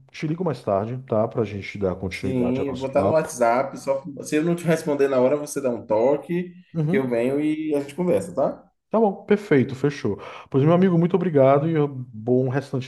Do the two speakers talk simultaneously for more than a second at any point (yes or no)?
yes